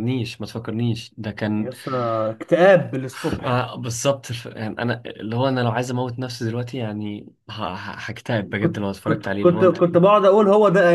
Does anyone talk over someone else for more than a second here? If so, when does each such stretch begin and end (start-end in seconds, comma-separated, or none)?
8.6-9.8